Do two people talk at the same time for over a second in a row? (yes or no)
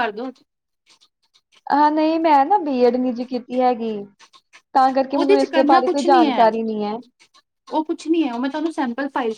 yes